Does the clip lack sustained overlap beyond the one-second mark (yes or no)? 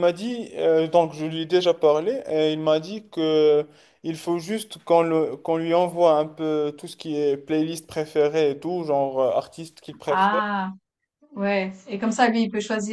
yes